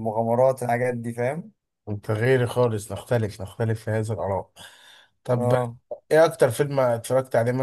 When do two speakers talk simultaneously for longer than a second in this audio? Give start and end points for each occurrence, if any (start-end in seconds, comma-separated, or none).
none